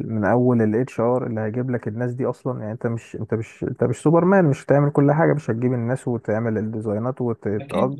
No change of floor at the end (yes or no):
yes